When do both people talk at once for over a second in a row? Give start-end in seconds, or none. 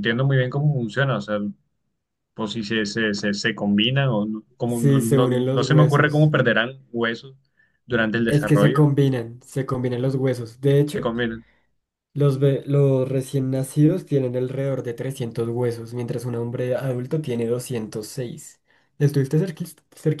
4.7-6.3